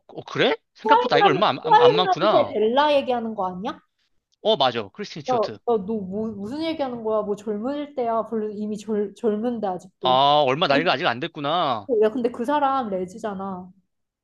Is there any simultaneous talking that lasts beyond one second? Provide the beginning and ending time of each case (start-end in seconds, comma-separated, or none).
0.8-2.6